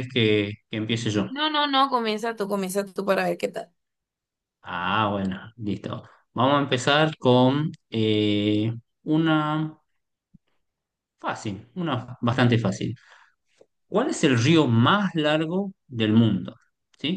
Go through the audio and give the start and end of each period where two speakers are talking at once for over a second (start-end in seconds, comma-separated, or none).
none